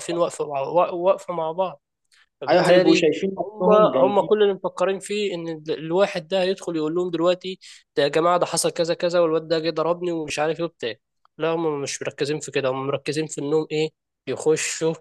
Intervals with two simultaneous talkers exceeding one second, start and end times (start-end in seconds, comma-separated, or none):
2.5-4.4